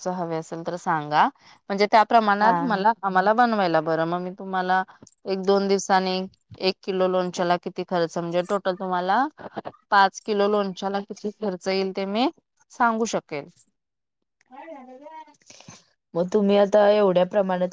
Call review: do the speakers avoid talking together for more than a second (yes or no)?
yes